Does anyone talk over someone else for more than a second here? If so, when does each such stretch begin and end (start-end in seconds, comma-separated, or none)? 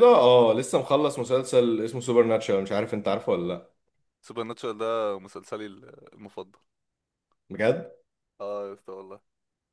none